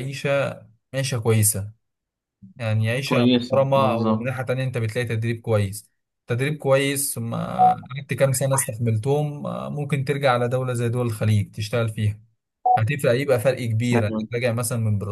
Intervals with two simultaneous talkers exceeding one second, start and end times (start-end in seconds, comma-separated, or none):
3.0-4.4